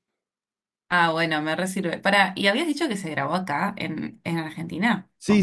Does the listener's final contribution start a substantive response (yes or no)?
yes